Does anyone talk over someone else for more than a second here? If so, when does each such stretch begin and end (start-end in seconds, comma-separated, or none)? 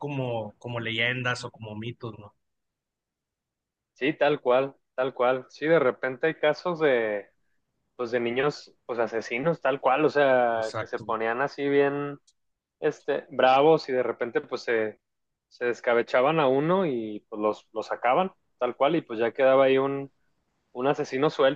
none